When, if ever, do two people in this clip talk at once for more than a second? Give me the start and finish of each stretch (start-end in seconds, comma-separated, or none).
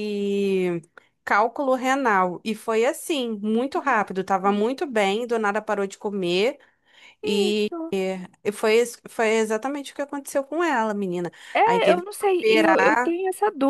11.5-13.2